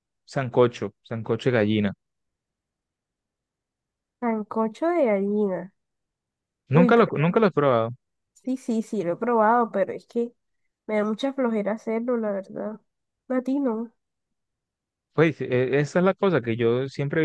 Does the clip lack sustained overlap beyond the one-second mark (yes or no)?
yes